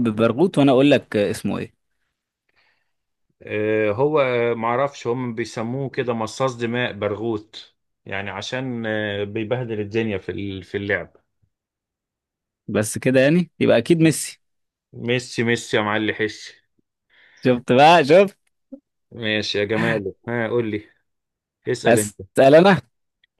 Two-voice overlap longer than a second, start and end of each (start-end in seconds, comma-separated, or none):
none